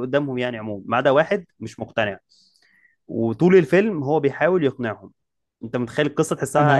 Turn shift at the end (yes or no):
yes